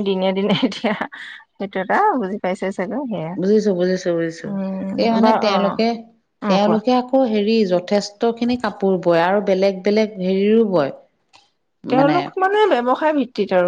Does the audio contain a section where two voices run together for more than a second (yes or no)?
no